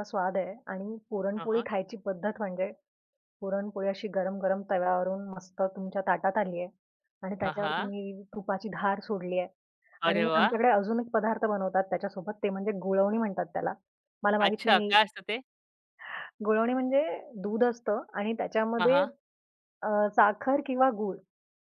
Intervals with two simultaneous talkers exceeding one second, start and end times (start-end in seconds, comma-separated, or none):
none